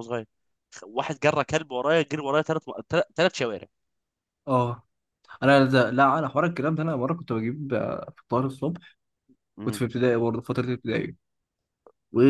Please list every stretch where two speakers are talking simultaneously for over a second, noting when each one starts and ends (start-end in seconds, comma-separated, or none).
none